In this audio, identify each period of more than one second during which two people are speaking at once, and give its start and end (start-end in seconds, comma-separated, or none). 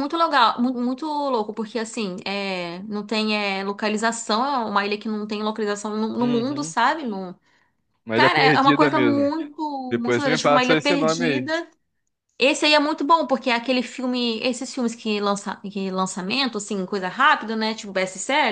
8.1-9.4, 10.0-11.6